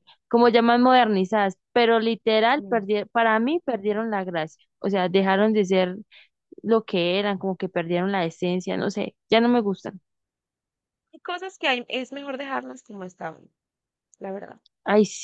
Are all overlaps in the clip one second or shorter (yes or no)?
yes